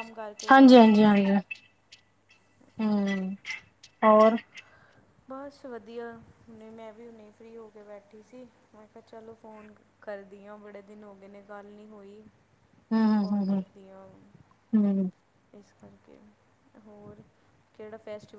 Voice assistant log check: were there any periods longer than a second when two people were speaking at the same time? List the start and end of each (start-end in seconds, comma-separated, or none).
none